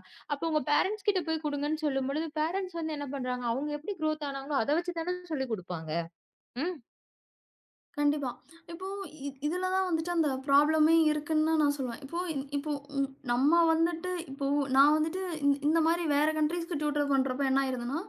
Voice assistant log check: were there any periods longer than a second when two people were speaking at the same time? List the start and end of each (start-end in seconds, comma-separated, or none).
none